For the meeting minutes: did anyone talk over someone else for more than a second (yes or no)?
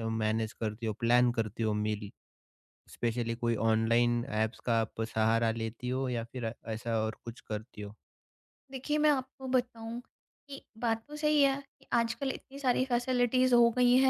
no